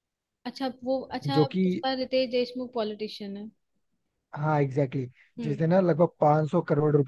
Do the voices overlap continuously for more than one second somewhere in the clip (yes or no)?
no